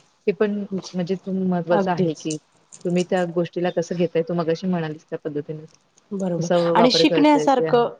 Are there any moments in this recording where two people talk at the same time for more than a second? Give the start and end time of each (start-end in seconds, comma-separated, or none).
none